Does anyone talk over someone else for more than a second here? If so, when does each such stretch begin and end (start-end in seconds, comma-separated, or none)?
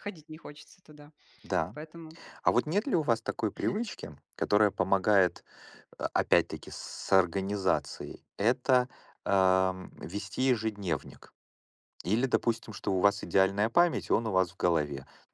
none